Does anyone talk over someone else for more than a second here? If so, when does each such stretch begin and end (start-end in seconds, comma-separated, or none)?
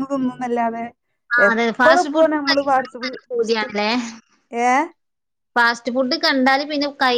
1.5-3.7